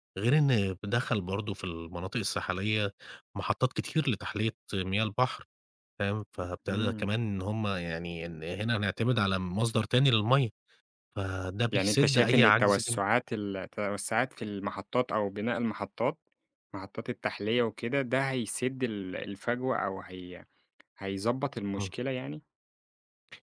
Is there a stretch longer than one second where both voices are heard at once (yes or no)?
yes